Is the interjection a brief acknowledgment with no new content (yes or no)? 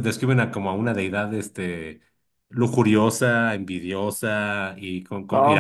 no